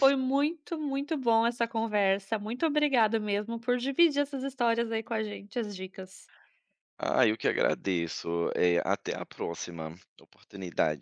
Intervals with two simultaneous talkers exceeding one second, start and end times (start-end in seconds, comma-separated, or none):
none